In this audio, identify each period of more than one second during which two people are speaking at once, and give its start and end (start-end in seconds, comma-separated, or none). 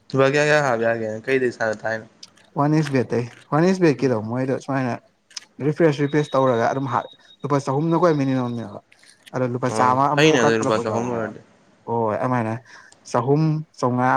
9.7-11.3